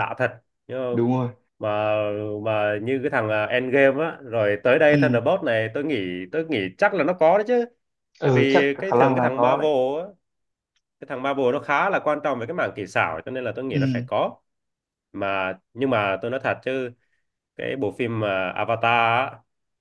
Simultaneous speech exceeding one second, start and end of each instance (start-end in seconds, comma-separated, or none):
8.2-9.7